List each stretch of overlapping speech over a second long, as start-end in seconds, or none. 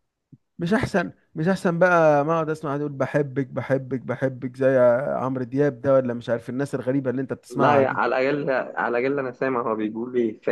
none